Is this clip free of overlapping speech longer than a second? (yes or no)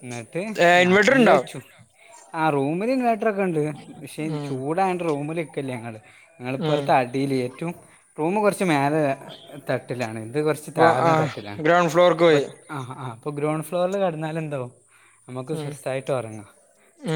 yes